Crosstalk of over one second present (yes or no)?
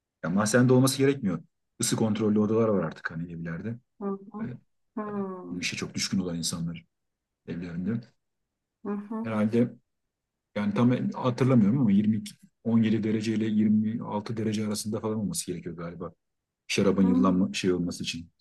no